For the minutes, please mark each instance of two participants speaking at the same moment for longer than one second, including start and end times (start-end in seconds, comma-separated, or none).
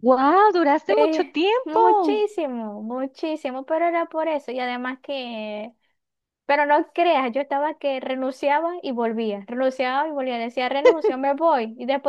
0.9-2.2